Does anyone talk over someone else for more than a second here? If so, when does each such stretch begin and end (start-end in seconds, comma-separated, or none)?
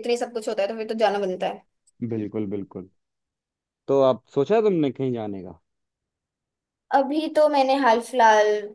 none